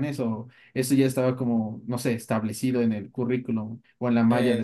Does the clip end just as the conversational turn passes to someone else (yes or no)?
yes